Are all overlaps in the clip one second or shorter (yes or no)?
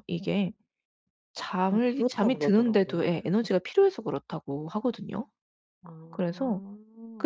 no